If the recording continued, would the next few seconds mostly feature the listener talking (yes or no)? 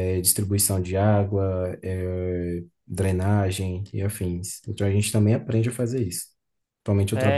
no